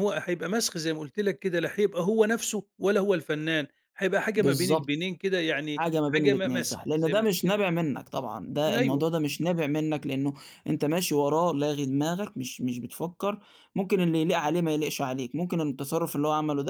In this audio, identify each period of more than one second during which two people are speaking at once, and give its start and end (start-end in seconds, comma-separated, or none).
5.8-7.6